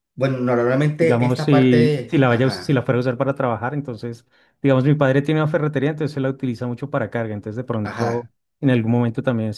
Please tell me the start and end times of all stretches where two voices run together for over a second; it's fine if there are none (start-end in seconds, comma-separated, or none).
1.0-2.8